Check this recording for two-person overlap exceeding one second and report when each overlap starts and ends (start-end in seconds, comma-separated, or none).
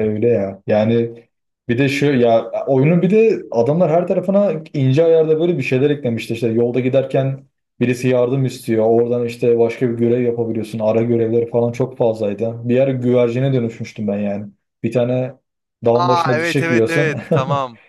15.9-17.2